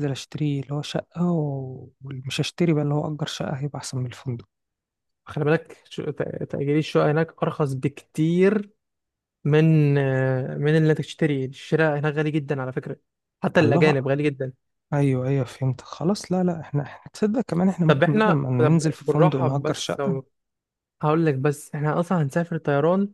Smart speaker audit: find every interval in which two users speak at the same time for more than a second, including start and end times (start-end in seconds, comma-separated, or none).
17.9-20.0